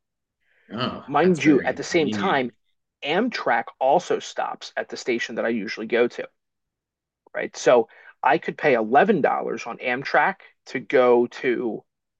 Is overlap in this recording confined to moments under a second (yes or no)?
no